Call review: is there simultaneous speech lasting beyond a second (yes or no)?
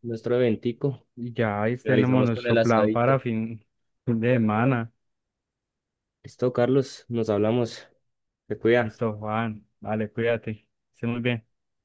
yes